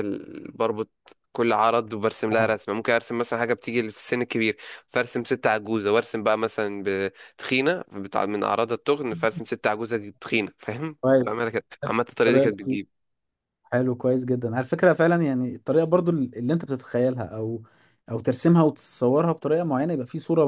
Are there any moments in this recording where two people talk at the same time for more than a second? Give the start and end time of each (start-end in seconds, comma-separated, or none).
none